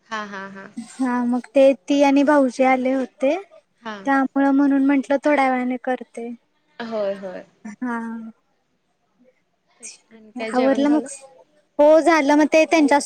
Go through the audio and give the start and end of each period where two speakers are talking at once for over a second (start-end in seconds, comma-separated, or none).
none